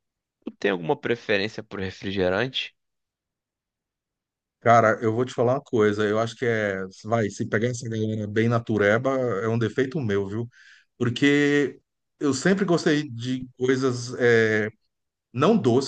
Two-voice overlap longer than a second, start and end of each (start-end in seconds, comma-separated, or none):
none